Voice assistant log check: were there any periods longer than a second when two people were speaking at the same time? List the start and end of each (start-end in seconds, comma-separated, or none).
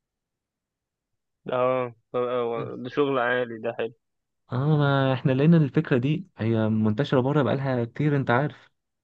none